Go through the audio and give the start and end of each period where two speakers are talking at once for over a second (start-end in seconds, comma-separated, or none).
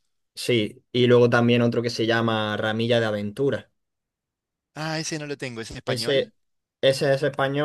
none